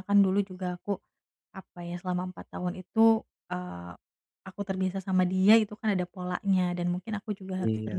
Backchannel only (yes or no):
yes